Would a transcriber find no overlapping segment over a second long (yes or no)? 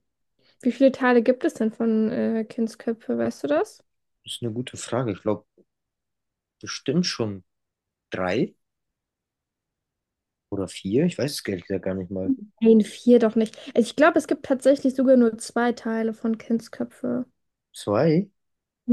yes